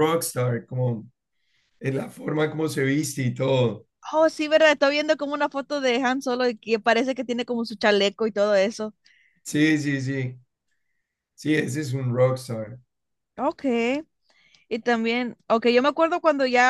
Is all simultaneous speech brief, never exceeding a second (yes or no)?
yes